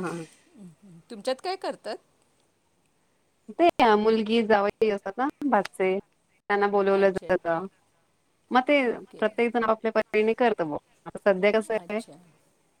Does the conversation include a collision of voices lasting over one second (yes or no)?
no